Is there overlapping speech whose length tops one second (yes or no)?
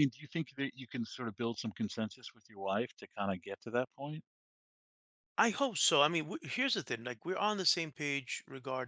no